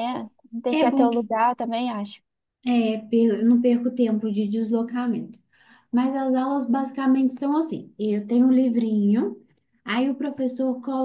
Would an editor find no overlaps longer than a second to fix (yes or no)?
yes